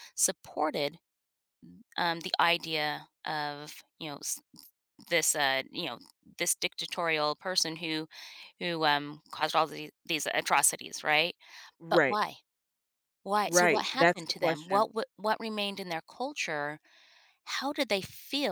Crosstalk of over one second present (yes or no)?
yes